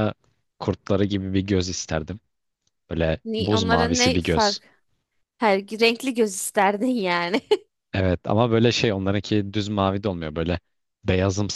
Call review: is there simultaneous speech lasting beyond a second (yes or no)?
yes